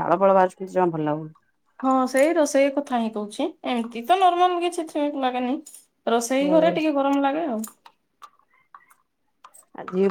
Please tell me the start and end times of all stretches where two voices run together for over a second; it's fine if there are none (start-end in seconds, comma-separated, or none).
none